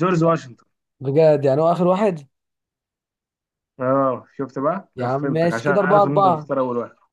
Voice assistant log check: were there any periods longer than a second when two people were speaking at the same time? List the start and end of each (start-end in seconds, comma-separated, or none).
5.0-6.5